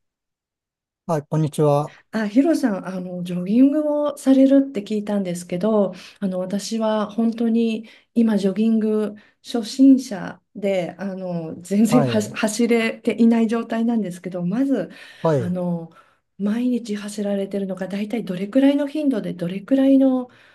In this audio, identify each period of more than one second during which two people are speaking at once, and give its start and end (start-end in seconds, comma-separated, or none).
none